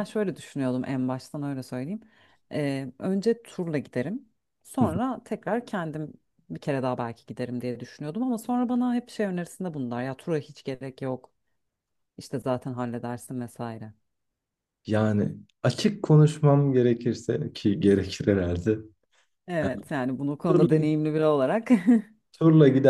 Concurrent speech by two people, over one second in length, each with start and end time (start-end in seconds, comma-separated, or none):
none